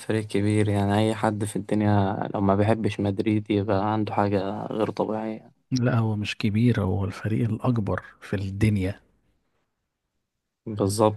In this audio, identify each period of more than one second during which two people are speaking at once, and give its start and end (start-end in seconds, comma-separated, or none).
none